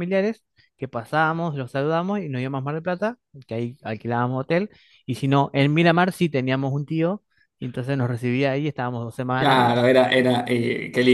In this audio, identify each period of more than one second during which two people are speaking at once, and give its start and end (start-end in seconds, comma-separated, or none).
none